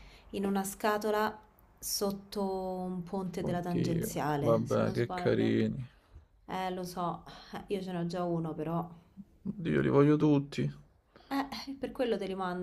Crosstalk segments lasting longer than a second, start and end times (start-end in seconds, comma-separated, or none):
3.4-5.6